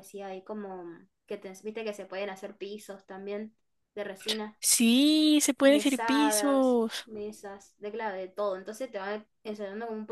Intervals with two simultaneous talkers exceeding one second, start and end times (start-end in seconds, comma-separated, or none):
5.6-7.1